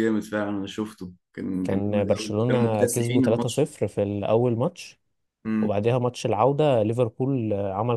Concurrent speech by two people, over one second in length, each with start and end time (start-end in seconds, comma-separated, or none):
1.6-3.7